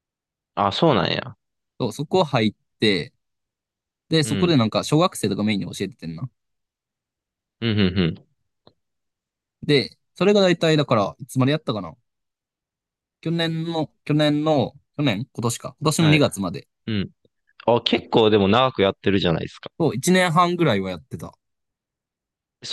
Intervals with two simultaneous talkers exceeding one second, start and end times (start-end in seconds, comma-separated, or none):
none